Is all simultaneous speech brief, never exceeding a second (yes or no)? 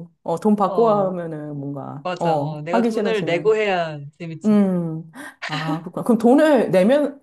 no